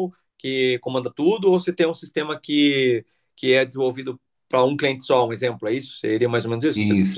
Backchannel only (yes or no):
no